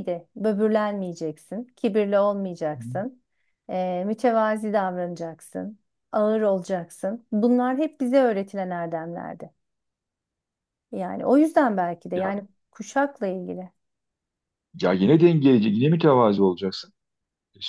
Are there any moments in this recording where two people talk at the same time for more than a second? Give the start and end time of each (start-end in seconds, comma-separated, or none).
none